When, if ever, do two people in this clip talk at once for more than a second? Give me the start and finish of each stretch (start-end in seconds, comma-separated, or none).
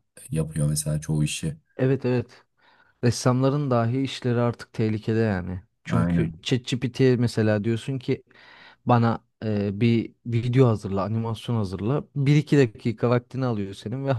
none